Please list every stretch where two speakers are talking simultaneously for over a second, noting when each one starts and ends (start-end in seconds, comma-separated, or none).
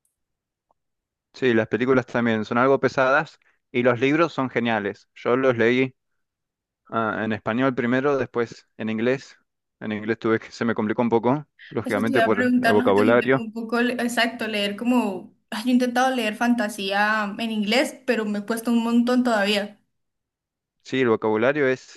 11.8-13.5